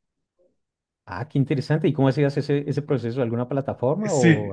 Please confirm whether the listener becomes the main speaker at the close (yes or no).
yes